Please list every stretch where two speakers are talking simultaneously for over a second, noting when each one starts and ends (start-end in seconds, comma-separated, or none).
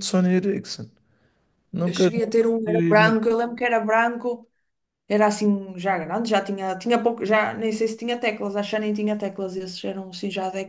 1.8-3.2